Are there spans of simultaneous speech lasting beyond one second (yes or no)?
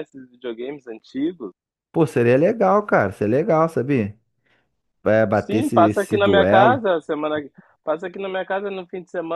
yes